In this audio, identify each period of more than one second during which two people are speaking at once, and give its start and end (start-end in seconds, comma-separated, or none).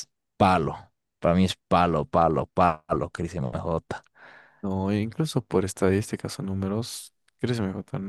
none